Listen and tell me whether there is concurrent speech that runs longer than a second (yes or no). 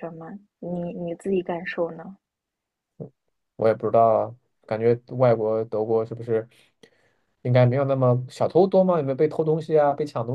no